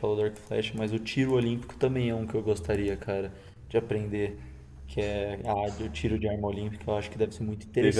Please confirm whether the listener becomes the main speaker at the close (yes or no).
yes